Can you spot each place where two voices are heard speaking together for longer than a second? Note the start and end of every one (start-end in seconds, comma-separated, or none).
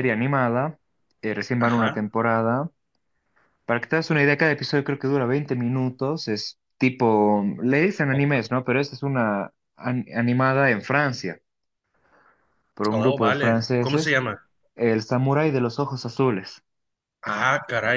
12.9-14.2